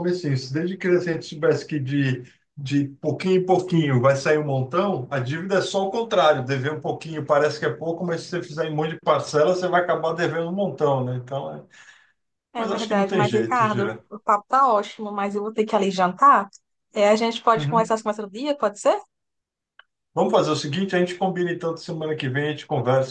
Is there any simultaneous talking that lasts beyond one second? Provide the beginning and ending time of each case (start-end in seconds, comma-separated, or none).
12.5-14.0